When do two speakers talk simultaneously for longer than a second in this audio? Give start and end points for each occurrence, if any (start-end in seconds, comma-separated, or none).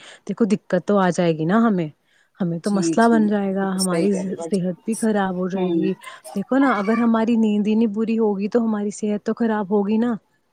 2.7-5.8